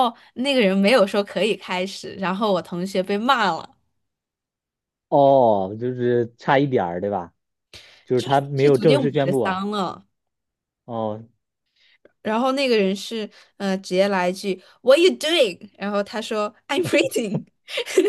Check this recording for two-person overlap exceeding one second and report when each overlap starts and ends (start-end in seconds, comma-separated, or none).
8.1-9.6